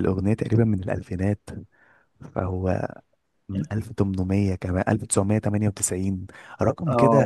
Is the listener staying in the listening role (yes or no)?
yes